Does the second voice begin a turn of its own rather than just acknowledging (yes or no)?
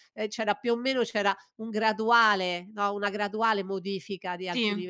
no